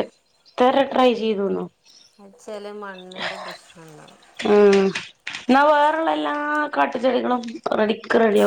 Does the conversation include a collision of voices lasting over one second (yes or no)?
no